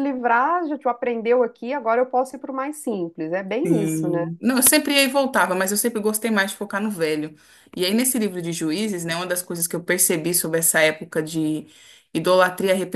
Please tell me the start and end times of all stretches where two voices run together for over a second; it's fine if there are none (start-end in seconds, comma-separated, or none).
none